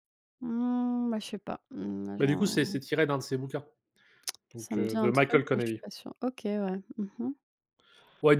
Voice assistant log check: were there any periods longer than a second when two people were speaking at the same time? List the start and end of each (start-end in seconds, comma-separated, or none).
4.5-5.8